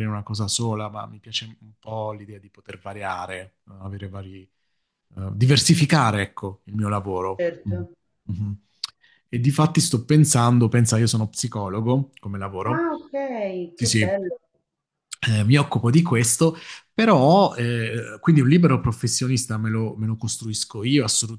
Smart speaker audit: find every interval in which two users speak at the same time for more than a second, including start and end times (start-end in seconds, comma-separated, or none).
none